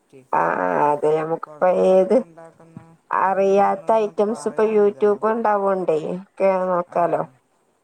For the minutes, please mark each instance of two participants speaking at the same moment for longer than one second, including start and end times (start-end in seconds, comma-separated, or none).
3.3-5.2